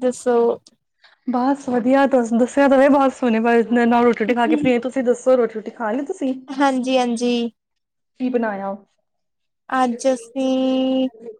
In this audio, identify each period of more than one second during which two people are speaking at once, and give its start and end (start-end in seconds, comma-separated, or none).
none